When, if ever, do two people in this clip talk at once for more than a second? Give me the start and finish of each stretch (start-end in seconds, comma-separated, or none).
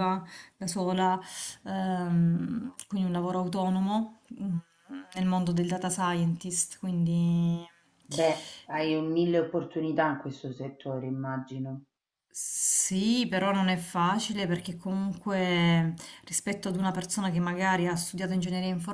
none